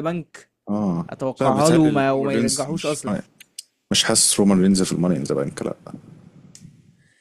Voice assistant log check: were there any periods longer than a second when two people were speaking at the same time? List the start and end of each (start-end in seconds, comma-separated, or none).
1.1-3.0